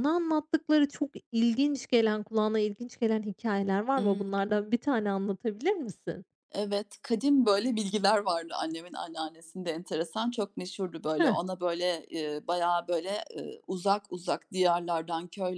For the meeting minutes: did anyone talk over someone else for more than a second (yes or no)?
no